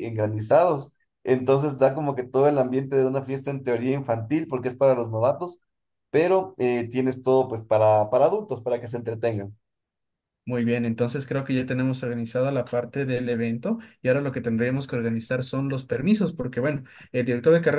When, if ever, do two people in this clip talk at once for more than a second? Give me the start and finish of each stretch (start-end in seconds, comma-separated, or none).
none